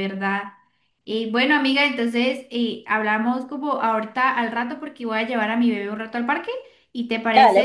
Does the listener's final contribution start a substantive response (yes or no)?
yes